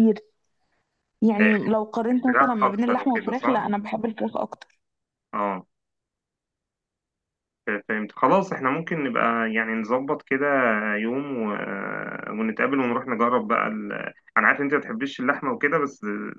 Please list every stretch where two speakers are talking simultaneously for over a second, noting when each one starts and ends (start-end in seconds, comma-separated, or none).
2.3-3.6